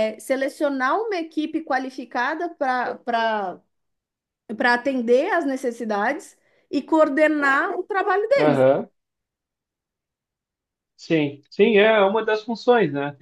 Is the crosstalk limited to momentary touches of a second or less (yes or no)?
yes